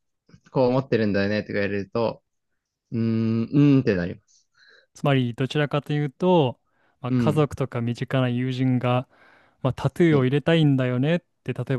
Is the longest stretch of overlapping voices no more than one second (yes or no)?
yes